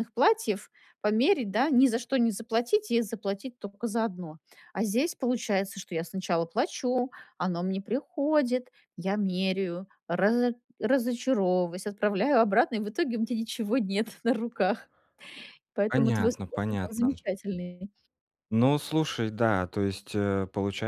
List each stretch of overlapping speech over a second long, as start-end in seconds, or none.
15.9-17.2